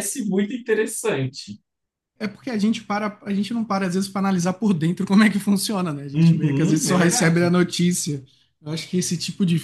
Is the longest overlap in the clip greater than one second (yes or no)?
yes